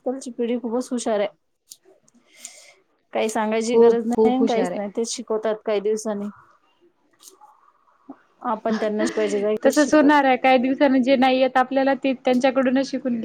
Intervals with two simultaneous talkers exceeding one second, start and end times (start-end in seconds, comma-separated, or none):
3.6-4.9